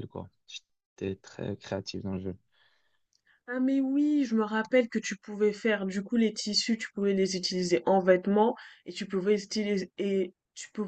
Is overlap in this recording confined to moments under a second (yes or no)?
yes